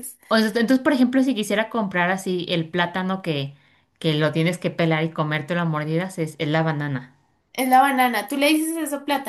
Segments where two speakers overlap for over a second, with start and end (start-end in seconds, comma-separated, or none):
none